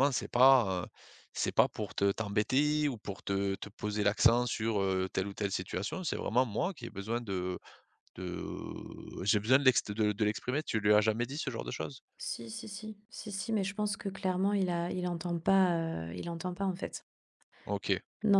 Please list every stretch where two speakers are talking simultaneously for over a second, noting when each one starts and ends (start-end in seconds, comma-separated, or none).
none